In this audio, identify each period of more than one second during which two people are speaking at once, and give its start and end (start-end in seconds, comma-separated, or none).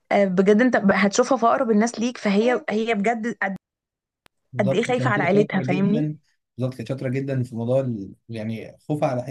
4.6-6.1